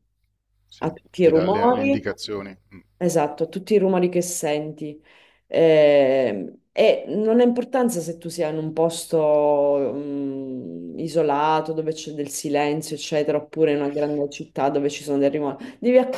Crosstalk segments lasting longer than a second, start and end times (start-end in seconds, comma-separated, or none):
0.8-2.1